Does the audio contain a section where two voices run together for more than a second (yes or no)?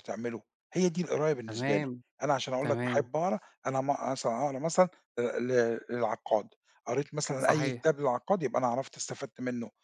no